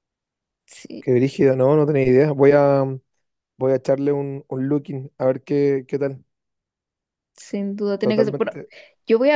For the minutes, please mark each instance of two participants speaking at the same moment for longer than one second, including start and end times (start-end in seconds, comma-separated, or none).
none